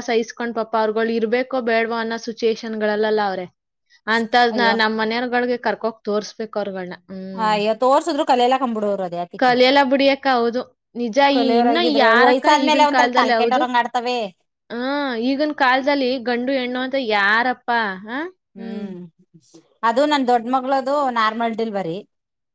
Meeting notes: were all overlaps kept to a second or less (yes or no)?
no